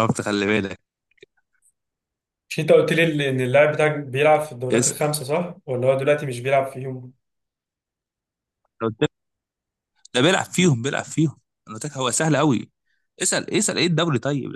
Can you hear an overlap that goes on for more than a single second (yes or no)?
no